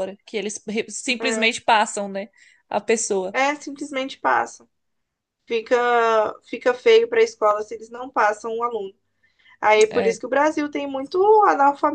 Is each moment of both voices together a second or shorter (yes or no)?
yes